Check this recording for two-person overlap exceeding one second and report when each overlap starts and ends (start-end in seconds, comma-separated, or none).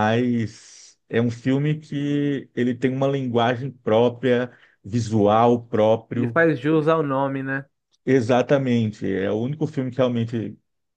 none